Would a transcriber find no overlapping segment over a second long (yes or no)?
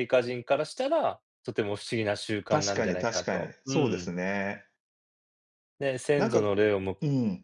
no